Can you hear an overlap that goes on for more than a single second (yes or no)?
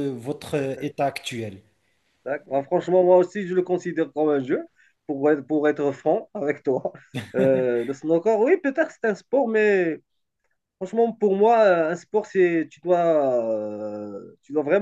no